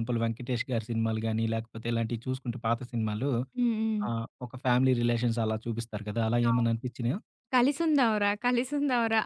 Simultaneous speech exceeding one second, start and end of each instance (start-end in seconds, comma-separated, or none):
none